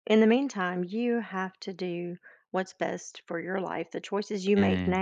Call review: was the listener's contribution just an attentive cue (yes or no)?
yes